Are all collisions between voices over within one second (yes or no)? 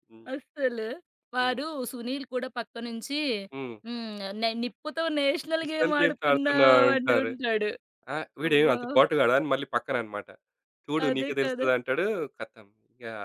no